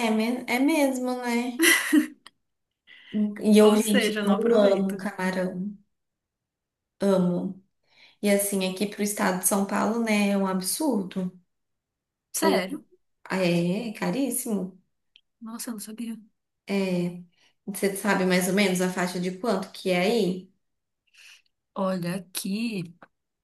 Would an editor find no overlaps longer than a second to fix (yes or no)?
no